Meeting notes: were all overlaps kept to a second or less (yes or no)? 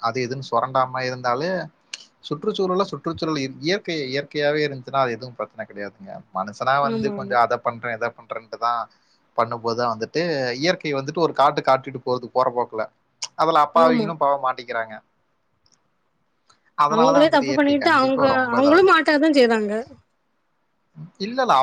no